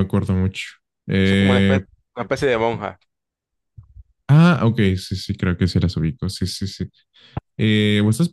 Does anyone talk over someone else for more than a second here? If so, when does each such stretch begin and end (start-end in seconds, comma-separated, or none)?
none